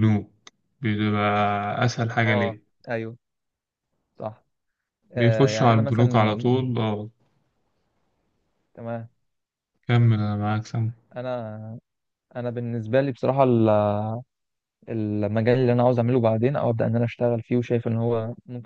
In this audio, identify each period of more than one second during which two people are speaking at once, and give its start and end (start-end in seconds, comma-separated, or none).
5.2-6.5